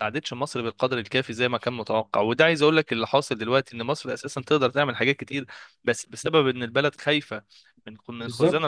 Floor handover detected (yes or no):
no